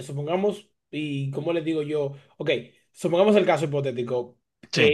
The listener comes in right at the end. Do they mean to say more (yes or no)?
no